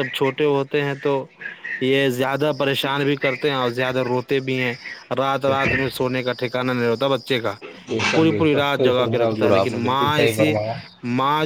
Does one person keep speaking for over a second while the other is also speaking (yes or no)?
yes